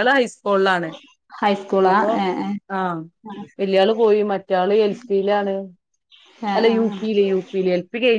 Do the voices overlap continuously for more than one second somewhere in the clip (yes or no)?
no